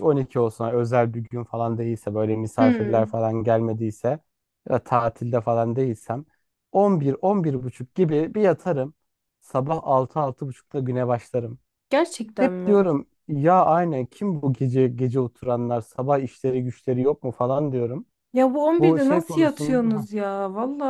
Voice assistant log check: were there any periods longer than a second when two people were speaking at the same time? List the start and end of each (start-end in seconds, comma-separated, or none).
18.8-20.1